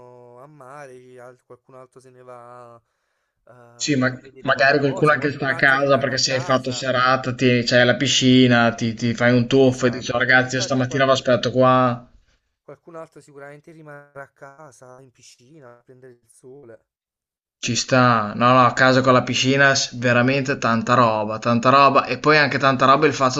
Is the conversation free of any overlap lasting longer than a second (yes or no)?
no